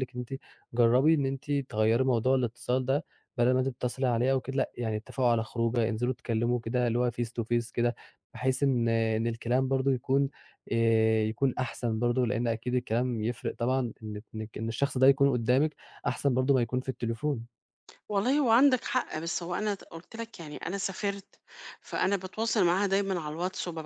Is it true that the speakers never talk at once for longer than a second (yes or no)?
yes